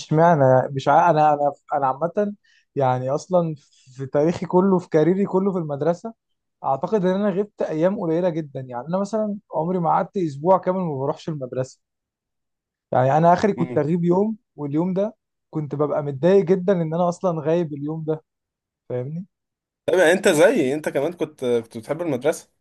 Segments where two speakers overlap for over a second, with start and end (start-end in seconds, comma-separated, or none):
none